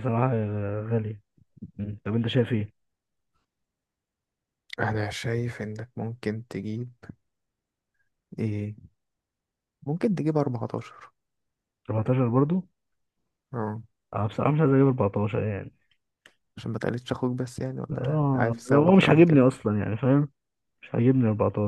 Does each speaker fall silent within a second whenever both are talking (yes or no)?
no